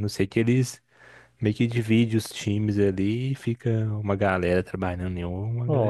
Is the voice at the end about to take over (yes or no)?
yes